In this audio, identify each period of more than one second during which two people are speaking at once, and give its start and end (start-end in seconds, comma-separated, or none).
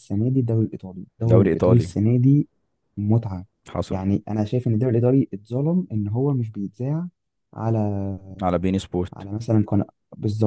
none